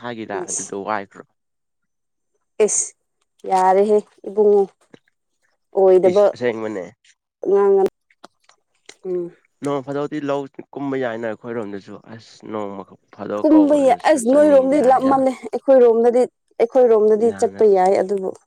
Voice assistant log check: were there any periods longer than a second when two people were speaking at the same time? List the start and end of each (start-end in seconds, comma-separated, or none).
13.4-15.2